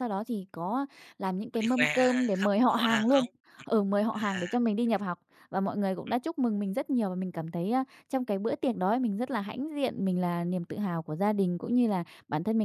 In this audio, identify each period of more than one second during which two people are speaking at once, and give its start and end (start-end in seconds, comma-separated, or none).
1.5-3.2